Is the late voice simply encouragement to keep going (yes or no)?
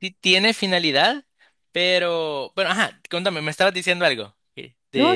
no